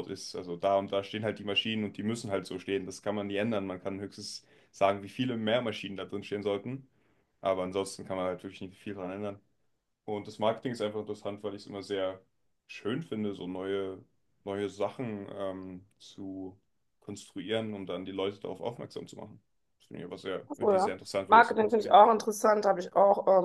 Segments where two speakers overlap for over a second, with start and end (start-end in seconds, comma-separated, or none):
20.5-22.0